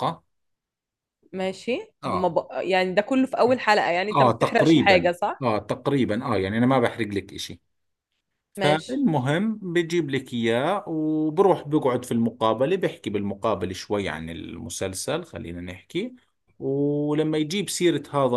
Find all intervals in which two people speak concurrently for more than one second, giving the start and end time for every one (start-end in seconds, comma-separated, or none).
4.1-5.4